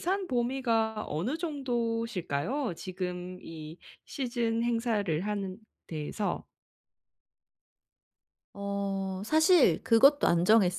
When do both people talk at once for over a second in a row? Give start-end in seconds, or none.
none